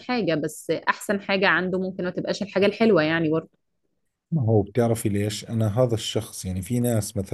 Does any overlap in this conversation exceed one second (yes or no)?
no